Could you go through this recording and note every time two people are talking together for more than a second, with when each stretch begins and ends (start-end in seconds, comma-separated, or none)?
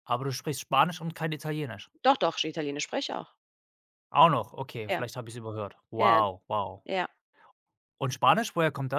none